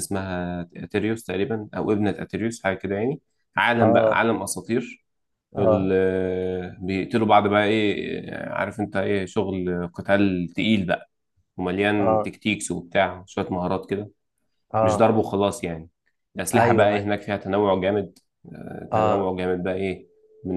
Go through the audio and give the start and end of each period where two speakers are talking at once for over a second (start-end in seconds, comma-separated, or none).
none